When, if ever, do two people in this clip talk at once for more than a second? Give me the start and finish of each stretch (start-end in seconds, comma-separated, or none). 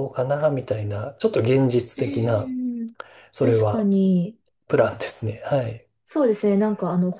none